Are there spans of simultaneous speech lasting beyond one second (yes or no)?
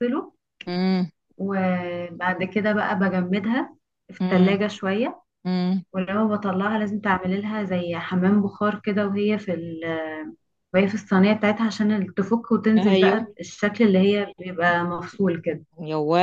no